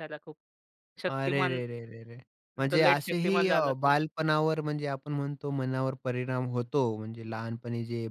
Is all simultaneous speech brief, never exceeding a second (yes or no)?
no